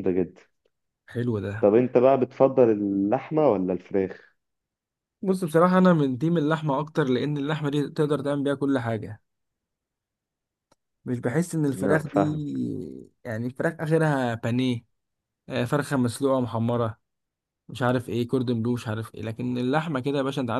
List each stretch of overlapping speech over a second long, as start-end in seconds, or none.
none